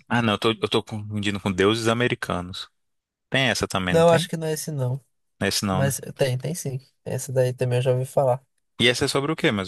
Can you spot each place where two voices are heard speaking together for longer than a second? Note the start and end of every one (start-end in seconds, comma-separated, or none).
none